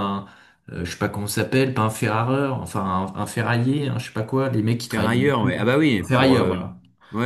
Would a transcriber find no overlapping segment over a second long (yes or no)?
no